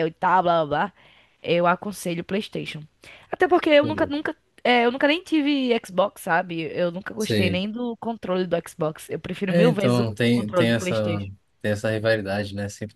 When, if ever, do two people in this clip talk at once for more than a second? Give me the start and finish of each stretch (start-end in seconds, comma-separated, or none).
9.5-11.2